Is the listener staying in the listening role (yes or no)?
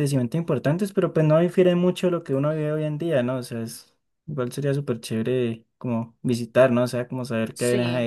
yes